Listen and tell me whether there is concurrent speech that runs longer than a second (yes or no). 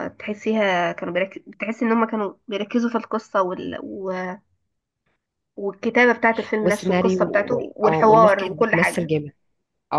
yes